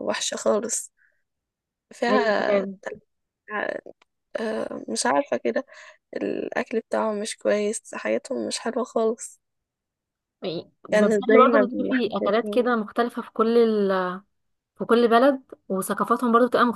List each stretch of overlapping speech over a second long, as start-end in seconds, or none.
10.9-12.7